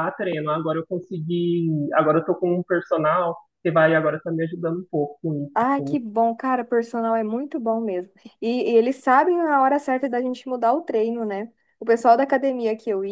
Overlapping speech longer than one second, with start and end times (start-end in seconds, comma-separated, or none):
none